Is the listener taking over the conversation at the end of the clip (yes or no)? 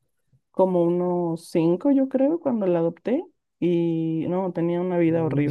yes